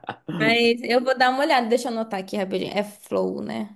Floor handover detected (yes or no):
yes